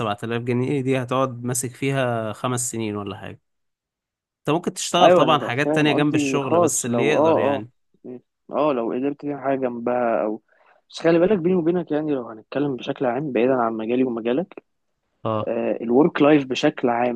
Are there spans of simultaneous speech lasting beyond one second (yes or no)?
yes